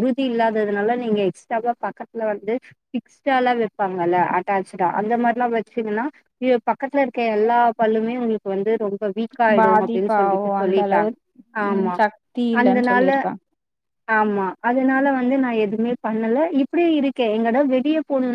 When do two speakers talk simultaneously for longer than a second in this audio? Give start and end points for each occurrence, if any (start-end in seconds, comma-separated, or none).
9.6-11.1